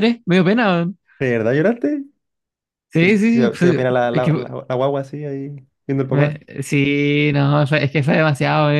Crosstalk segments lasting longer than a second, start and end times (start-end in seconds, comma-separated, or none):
3.0-4.5